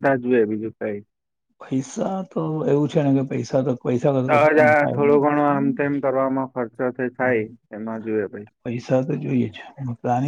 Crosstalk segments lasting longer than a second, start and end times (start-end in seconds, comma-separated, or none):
4.3-5.9